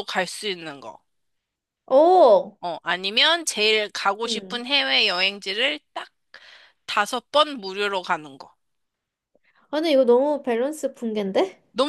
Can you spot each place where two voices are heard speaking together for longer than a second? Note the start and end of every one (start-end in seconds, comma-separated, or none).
none